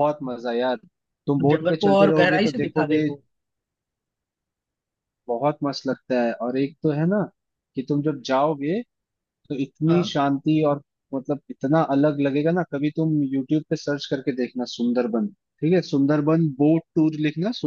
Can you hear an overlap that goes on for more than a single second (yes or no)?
yes